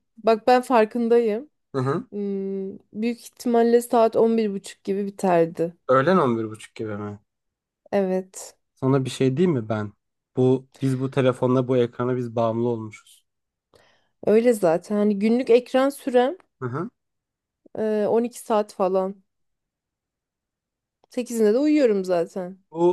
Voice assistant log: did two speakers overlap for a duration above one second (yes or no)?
no